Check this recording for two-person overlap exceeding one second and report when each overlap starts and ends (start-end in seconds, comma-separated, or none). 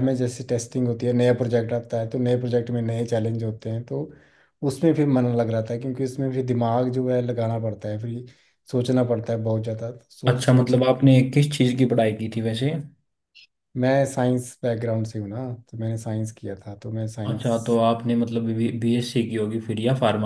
none